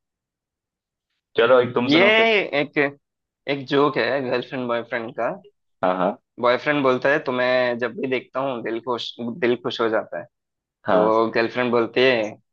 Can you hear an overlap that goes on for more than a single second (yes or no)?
no